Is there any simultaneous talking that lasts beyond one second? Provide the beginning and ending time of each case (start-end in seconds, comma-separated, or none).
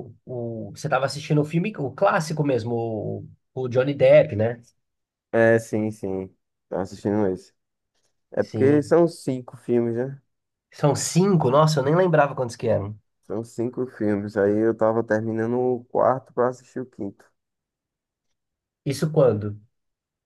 none